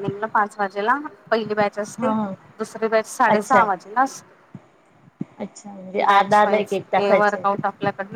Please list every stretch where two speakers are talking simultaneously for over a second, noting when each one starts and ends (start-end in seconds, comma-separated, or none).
6.1-7.4